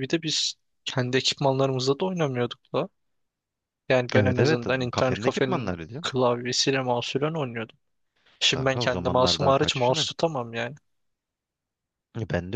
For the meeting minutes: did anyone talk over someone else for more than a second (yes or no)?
yes